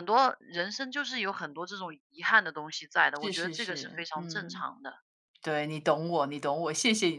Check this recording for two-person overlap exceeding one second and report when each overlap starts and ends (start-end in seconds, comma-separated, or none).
3.2-4.6